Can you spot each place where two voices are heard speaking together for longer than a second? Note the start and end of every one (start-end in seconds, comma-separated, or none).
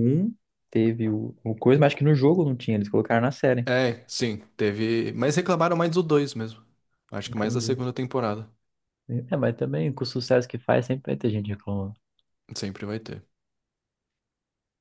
none